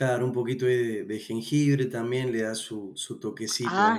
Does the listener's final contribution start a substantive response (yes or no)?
yes